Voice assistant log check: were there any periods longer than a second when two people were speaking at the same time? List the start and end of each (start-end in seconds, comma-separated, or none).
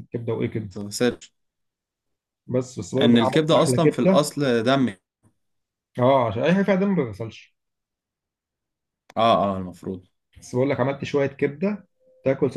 3.0-4.3